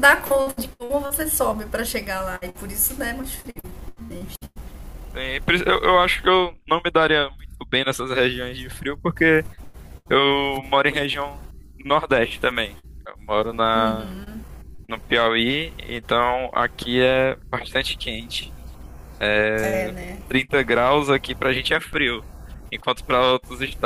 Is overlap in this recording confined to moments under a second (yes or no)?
yes